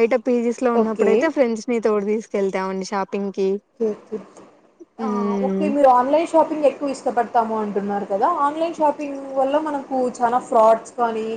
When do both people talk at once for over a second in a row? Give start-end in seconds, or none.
none